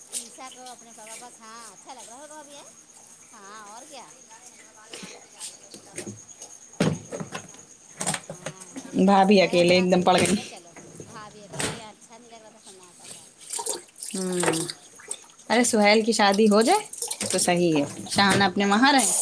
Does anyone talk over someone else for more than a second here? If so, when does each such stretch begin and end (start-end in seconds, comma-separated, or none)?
9.1-10.7